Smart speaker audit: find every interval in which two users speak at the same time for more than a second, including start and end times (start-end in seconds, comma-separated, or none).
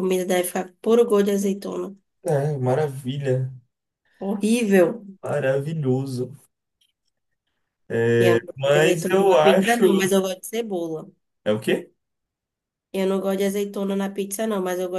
8.6-10.0